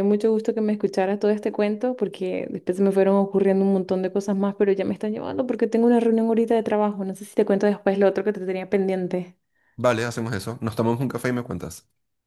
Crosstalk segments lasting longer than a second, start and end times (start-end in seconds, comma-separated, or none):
none